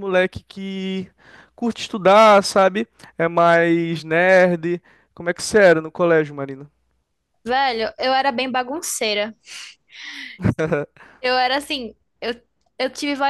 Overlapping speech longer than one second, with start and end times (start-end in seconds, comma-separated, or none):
none